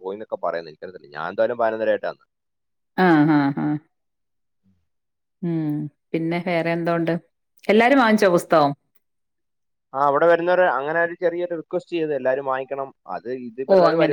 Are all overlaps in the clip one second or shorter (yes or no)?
yes